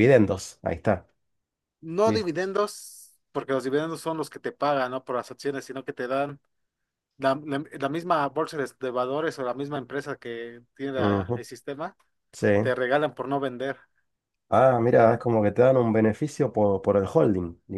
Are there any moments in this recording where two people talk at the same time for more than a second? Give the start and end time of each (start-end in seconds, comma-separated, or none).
none